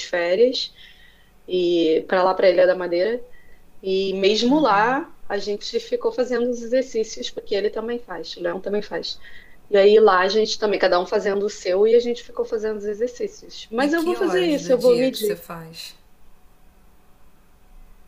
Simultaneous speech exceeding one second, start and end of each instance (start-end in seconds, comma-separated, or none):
13.8-15.4